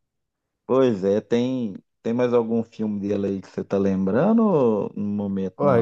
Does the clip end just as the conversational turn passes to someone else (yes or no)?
yes